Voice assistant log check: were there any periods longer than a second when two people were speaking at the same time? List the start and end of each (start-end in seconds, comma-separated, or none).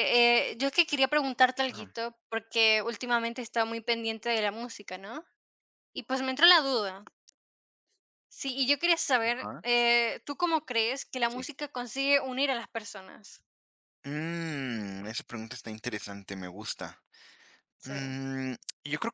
none